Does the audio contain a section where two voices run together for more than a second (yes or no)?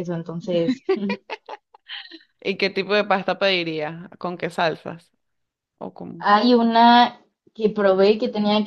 no